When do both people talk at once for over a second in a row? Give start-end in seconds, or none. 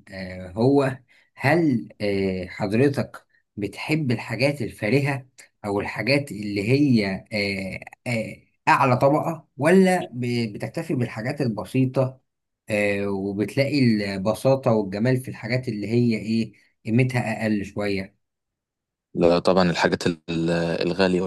none